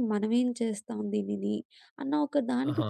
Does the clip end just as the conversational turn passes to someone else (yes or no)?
no